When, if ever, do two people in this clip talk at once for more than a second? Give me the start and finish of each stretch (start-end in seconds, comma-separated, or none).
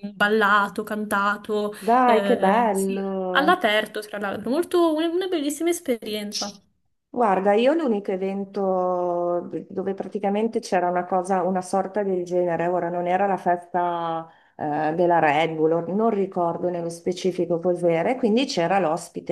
1.8-3.7